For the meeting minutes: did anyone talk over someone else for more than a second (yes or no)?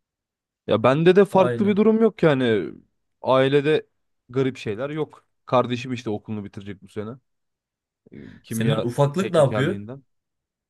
yes